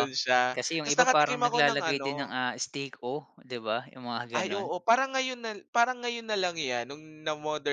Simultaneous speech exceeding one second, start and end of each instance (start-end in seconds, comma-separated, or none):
0.5-2.3